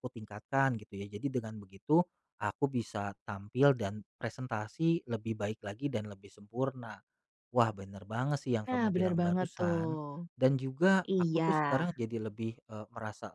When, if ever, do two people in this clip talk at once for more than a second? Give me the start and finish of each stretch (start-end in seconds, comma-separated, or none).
8.7-10.0